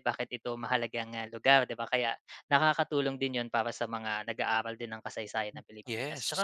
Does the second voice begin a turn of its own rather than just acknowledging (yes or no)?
no